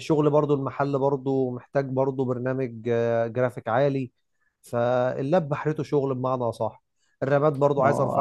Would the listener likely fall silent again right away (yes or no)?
no